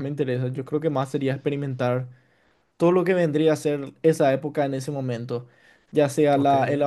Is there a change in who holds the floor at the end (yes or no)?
no